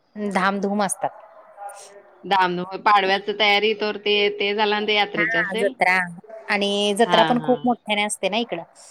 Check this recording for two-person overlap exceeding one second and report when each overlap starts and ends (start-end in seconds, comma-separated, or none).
none